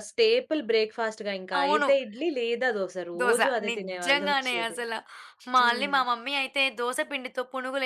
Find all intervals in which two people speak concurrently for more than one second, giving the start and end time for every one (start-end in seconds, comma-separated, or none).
3.2-4.8